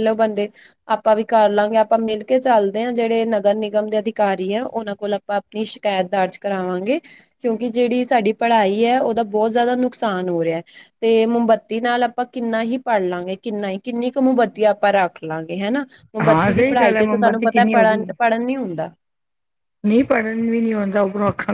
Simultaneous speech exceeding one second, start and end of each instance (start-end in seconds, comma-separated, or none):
16.3-17.5